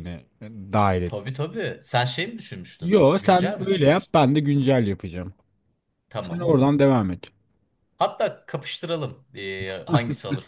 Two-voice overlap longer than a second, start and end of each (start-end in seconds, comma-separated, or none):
2.8-4.2